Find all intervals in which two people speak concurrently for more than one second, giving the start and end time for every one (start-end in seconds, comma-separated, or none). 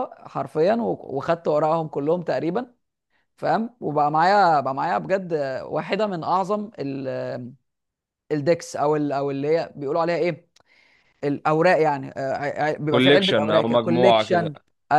12.9-14.5